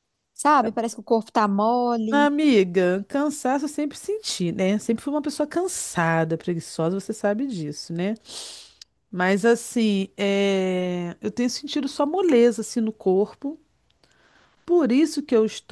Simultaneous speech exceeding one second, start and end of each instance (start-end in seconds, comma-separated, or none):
none